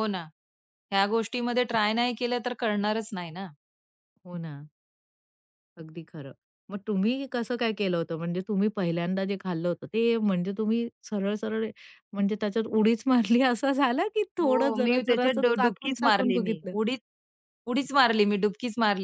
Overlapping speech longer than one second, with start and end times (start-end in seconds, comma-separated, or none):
14.4-16.7